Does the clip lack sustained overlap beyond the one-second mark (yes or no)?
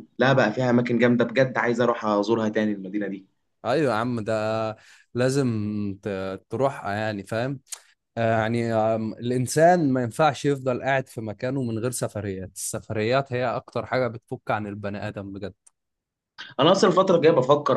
yes